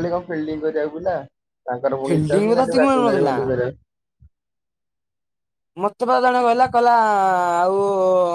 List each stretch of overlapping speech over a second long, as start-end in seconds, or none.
2.1-3.4